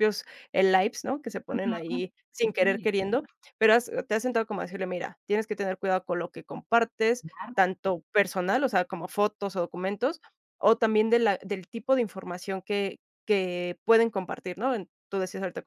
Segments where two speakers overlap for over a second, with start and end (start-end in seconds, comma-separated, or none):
1.5-2.9